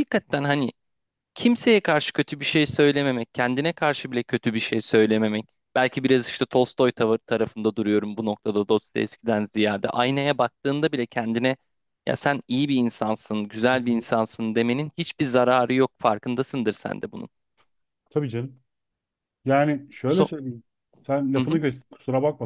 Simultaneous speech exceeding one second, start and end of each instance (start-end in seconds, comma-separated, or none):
none